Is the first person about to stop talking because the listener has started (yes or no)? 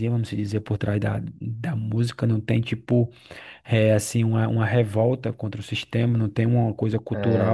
no